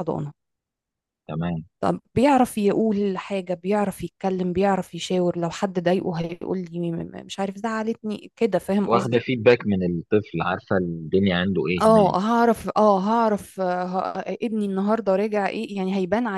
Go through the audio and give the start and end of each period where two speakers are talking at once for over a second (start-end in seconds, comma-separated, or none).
none